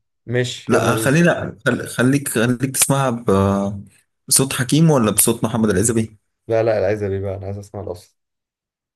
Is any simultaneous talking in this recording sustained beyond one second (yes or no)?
no